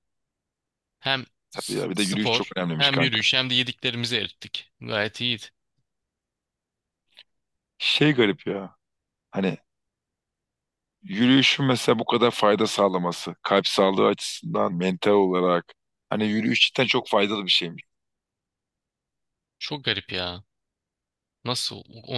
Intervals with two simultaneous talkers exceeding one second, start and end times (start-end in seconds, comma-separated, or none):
1.5-3.2